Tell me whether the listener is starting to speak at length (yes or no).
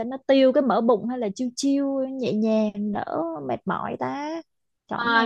yes